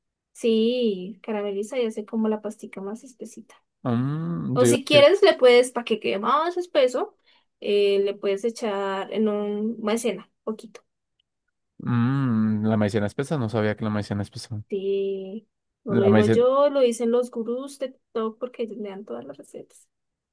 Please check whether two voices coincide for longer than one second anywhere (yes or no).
no